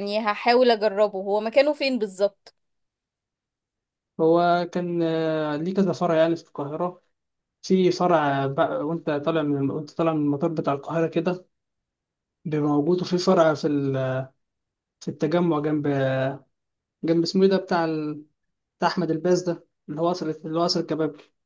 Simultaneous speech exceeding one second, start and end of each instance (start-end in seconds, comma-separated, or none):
none